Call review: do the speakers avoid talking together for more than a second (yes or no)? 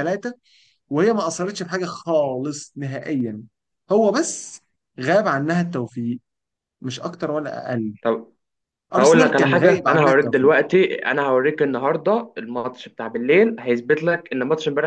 no